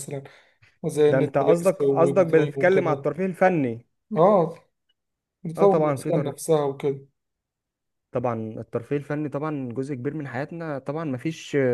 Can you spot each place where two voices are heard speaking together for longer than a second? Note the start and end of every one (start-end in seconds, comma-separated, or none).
1.1-3.0